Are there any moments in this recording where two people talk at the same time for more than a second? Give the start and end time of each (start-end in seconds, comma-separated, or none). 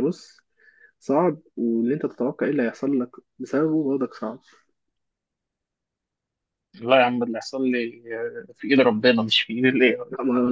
none